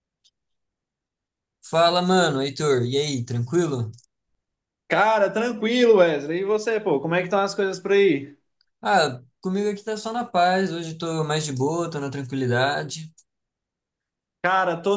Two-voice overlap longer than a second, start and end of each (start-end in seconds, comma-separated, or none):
none